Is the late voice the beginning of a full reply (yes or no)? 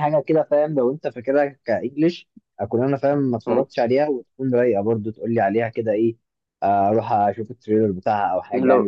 yes